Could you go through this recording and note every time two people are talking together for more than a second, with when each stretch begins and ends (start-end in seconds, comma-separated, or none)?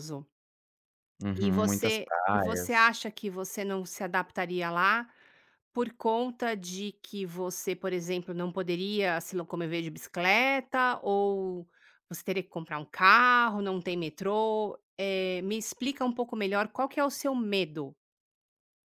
1.4-2.9